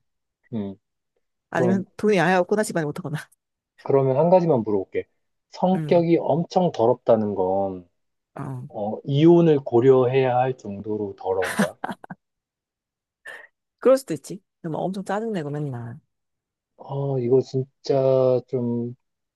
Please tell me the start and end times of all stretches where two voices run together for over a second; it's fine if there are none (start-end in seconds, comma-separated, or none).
none